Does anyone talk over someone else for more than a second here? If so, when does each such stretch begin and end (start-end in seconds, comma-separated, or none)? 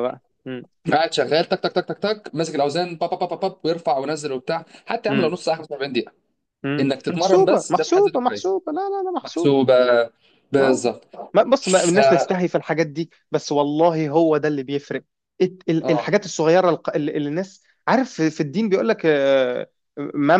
6.8-8.6